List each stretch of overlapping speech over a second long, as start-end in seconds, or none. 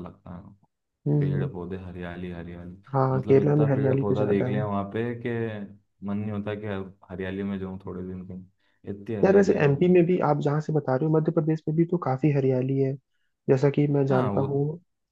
3.2-4.7